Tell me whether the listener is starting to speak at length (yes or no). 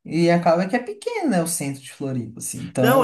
yes